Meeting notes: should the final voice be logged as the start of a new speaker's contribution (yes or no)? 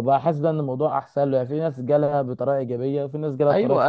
yes